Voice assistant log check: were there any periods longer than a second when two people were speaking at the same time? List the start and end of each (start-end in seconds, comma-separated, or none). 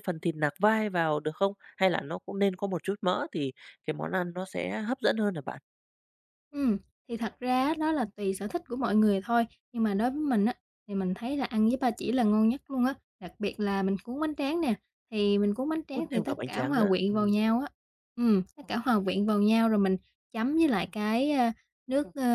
15.9-17.4